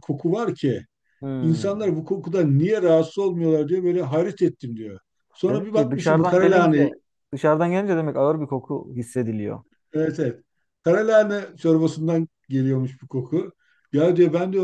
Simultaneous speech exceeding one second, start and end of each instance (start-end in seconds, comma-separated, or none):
5.5-6.9